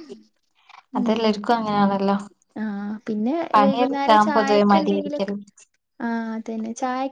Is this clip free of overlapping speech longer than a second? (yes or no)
no